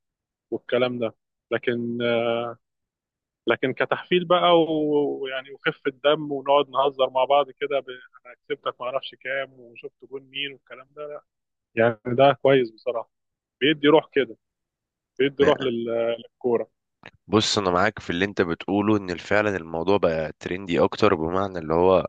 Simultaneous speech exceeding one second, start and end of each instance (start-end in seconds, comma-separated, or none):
none